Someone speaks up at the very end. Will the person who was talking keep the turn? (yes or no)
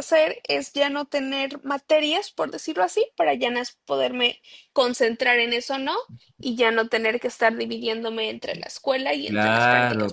no